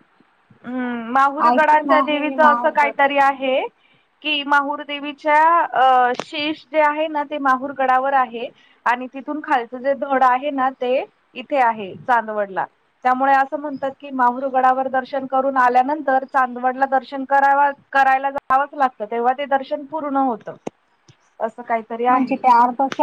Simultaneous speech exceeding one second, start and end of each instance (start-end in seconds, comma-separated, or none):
1.5-3.0